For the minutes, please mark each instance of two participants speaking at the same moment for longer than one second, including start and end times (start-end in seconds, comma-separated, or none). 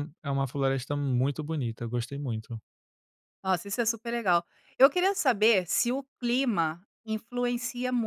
none